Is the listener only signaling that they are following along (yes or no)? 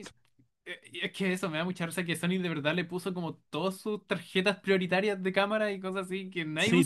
no